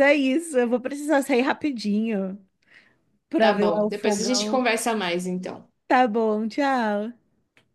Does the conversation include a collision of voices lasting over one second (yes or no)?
yes